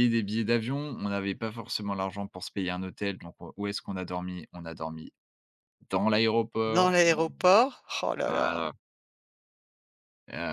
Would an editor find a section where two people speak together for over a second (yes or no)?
no